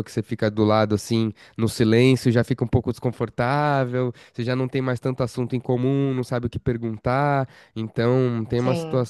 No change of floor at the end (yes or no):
yes